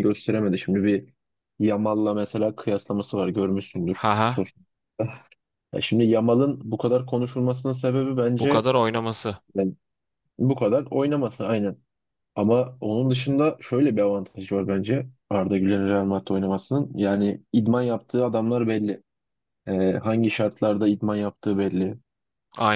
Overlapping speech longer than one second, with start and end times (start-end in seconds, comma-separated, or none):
none